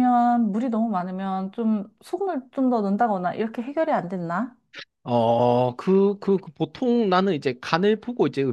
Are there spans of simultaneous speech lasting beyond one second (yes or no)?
no